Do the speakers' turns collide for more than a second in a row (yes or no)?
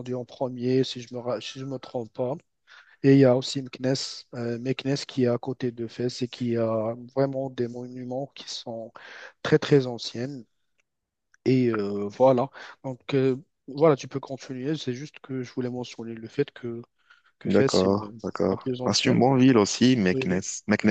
yes